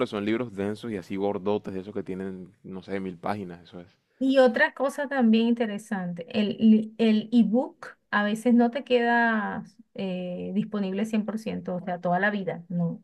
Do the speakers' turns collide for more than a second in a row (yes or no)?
no